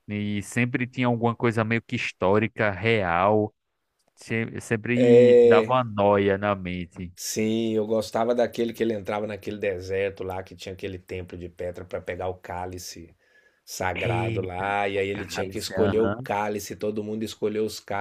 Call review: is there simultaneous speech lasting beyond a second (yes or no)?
yes